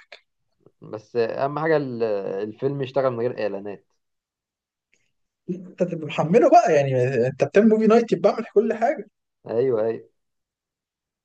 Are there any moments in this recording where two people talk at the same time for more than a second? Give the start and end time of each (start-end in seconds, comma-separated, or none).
none